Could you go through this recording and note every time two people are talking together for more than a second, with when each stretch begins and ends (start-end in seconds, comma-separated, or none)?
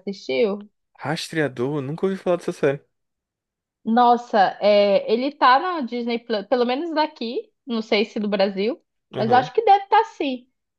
none